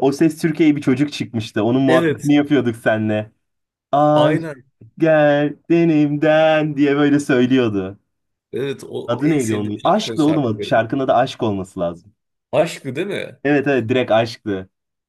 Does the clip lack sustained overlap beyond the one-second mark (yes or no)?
no